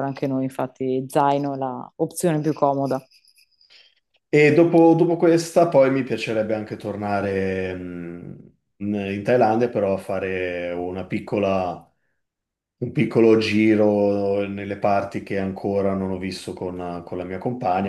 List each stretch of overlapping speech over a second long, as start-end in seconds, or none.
none